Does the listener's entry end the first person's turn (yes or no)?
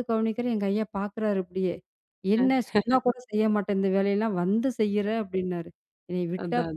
no